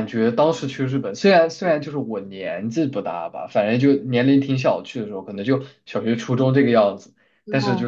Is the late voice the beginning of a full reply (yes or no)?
no